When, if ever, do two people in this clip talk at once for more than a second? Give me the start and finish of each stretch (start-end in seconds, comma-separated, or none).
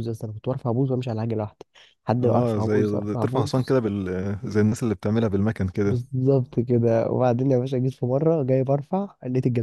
2.2-3.8